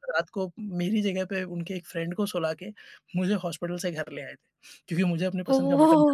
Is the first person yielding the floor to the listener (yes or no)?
yes